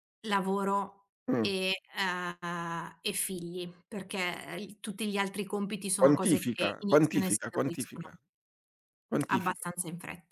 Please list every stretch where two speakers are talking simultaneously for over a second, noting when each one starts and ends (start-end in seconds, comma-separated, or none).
6.0-8.1